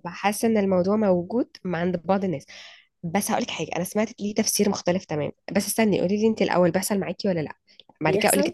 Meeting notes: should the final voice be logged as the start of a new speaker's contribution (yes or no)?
yes